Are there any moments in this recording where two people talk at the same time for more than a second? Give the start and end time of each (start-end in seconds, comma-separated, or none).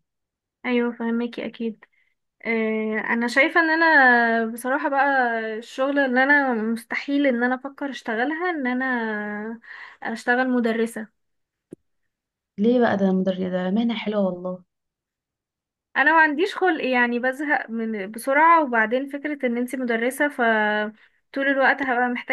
none